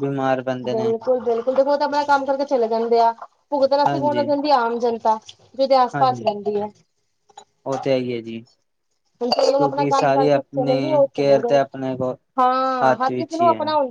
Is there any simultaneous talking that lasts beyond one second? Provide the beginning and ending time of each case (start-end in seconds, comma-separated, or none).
9.6-11.6